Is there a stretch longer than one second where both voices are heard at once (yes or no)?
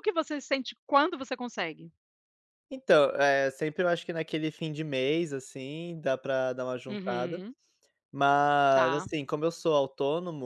no